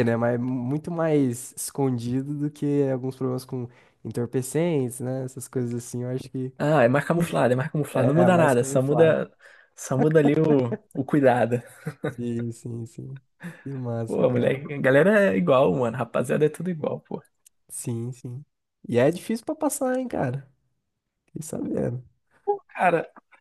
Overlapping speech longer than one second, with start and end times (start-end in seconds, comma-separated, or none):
7.9-9.2